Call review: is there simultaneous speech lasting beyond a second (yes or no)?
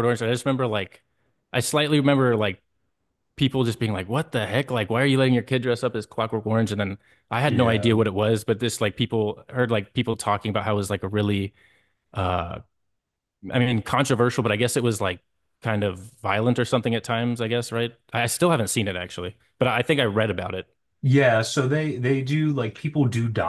no